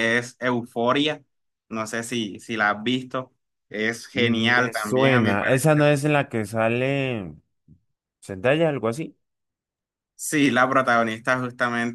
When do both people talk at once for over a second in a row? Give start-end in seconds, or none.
4.1-5.8